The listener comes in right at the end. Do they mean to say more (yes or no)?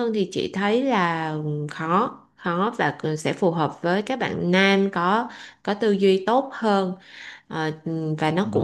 no